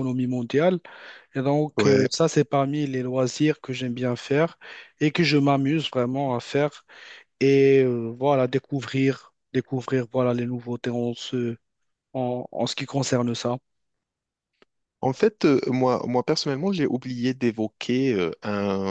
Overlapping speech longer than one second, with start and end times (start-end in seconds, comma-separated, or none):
none